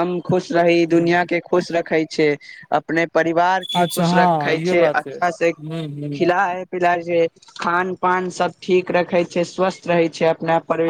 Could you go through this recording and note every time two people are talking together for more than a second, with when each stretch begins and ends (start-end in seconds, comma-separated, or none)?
3.8-5.5